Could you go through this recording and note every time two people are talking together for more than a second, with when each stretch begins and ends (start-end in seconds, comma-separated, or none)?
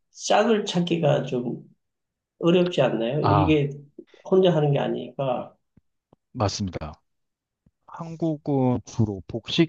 none